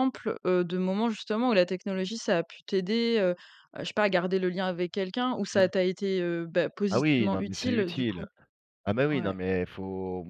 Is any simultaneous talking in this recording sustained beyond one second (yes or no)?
yes